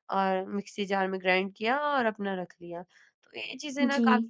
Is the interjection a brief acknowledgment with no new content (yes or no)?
yes